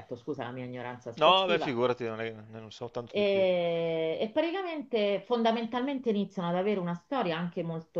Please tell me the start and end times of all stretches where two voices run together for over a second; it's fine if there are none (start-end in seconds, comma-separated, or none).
none